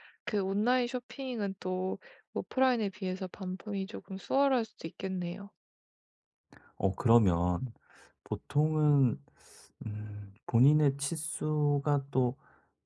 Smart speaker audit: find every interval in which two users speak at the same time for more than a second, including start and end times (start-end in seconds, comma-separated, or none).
none